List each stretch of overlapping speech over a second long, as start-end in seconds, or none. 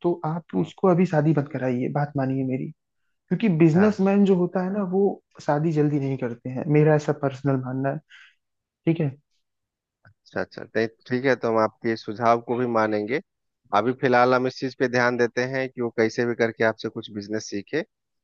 none